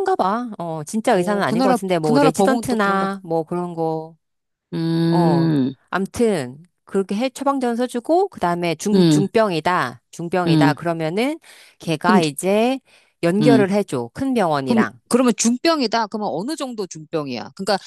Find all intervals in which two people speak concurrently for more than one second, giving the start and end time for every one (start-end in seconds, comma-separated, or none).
1.1-3.1